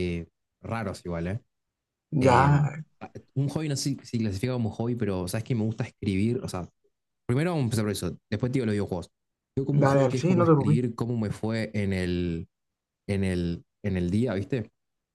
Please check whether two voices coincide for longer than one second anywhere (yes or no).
yes